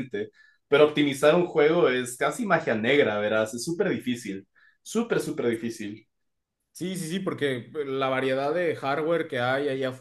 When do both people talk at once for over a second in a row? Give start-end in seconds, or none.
none